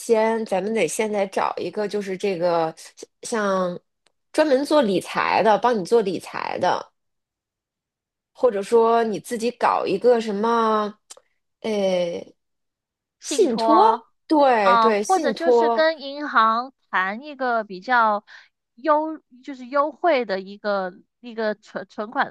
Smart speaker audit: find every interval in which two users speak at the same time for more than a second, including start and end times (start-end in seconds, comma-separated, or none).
14.6-15.9